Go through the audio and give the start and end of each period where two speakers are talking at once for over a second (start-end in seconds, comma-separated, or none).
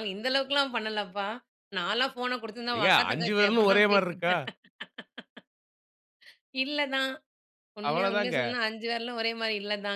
2.8-4.3